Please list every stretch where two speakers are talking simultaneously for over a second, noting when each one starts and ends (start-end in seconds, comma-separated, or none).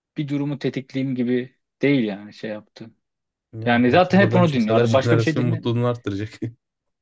3.6-5.7